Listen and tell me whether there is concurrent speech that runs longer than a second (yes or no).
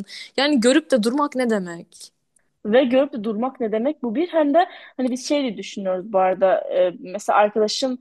no